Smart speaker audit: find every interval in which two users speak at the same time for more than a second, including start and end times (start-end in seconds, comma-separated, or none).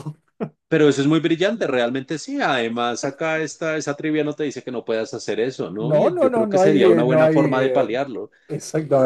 5.8-8.0